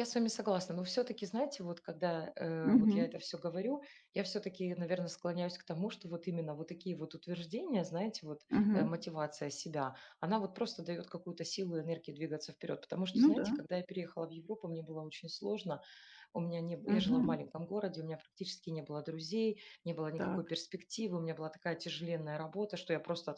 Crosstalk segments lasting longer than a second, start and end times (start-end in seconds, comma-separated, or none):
none